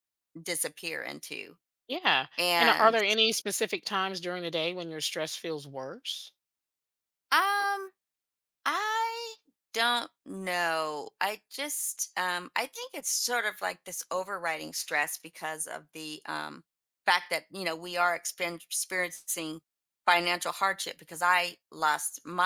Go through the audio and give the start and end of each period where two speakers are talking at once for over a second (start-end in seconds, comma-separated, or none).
none